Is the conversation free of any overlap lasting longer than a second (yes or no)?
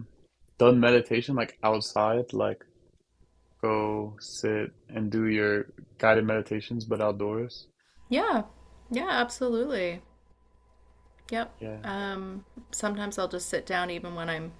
yes